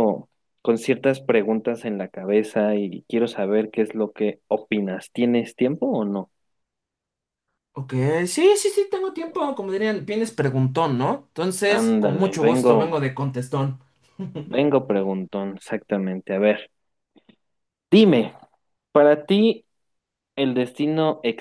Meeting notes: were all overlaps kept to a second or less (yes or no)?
no